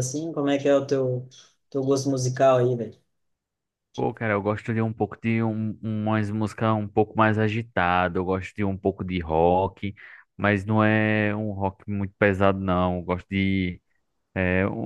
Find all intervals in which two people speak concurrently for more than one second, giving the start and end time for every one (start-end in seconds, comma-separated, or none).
none